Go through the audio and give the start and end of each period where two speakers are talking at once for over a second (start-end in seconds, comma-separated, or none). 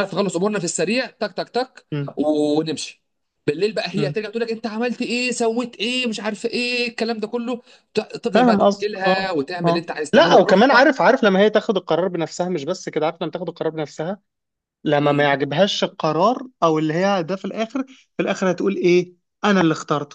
8.3-10.9